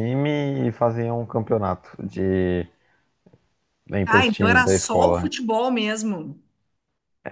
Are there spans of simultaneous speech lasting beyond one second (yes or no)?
yes